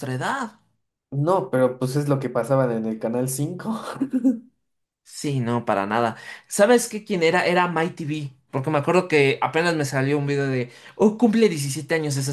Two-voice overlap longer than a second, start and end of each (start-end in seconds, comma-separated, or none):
none